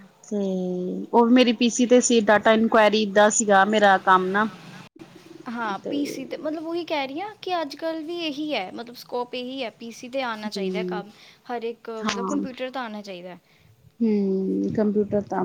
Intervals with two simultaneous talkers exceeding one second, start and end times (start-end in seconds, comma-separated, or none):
none